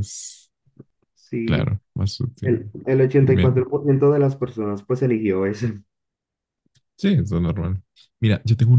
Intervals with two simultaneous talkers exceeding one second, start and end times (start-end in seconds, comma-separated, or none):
none